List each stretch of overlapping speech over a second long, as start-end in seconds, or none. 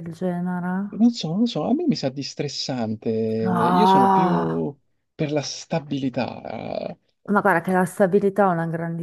3.4-4.7